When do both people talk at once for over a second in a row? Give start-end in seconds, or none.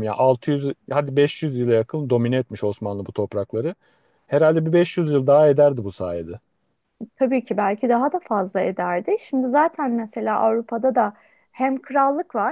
none